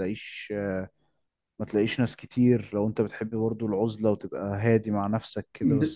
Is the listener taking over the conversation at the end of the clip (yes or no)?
yes